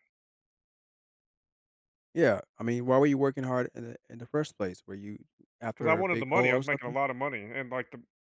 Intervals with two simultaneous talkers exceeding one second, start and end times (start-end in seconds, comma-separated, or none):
5.7-7.0